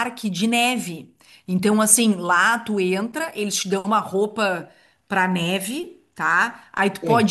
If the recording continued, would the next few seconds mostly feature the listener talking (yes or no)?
no